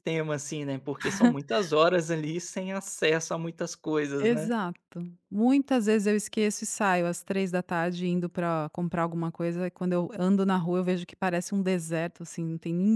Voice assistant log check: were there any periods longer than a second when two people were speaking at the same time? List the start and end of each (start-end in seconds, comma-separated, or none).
none